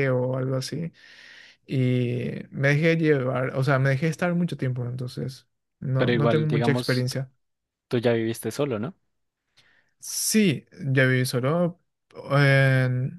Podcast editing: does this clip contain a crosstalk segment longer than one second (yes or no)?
yes